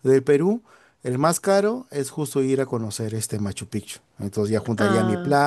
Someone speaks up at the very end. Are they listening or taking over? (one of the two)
listening